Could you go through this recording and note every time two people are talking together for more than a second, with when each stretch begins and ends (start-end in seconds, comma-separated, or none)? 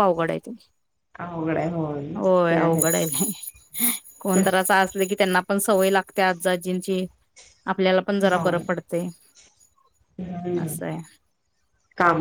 none